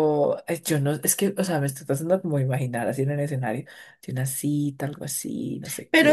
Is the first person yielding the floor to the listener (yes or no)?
yes